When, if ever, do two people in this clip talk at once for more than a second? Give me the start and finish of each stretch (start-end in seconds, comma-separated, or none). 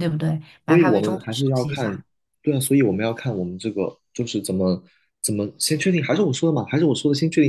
0.7-2.0